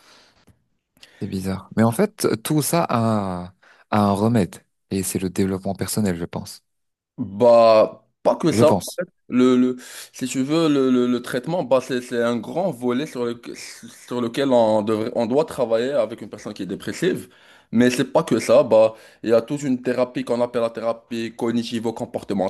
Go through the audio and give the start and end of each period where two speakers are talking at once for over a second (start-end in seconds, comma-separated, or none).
none